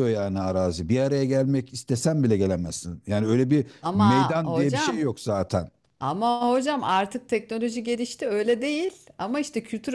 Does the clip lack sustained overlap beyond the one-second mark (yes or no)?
no